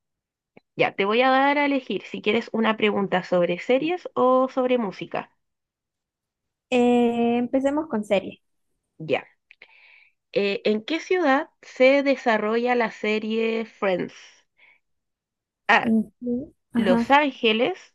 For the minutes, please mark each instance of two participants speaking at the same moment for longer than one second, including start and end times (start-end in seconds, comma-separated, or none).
none